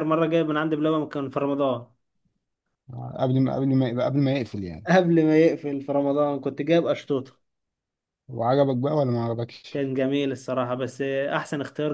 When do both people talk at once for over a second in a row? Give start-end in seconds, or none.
none